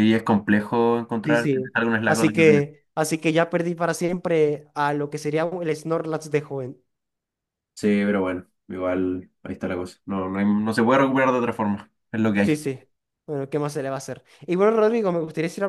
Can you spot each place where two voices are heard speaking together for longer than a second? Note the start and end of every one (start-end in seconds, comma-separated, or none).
1.2-2.7